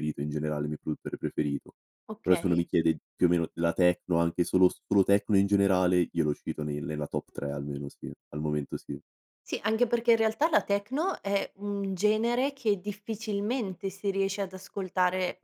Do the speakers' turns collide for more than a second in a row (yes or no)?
no